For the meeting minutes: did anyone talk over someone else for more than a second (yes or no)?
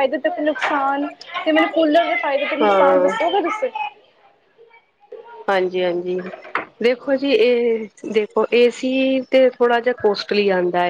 no